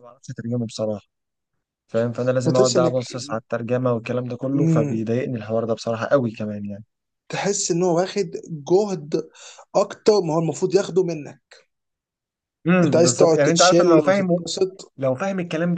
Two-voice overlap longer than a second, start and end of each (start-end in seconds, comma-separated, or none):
12.8-14.4